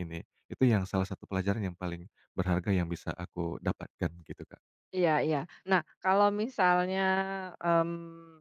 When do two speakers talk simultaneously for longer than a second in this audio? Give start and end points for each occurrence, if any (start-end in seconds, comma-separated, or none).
none